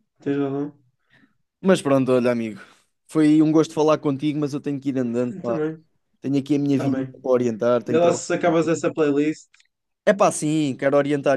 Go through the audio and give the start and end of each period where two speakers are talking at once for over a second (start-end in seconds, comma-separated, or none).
none